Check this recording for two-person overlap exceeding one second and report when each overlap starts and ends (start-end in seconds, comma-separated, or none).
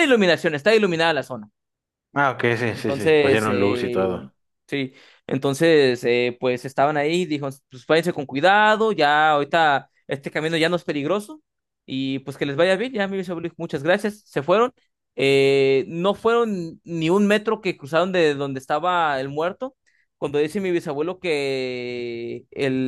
2.7-4.3